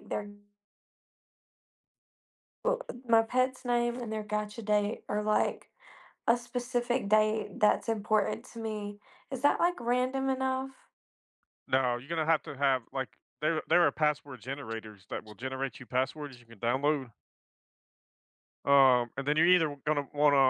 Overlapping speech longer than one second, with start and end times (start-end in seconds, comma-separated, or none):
none